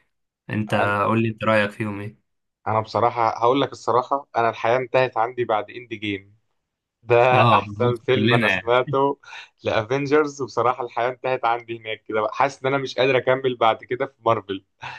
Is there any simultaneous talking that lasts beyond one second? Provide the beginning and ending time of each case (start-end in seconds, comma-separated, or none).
7.3-8.8